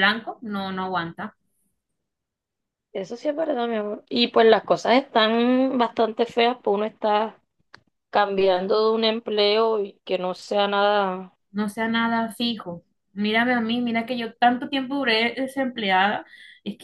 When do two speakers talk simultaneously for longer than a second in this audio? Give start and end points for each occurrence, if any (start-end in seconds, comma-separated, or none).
none